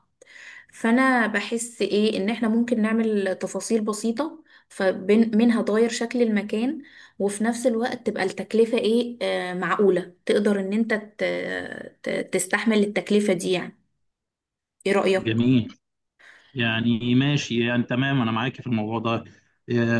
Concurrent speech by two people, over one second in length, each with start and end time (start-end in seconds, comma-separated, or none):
none